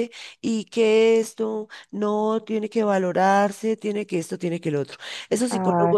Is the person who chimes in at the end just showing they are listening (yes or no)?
yes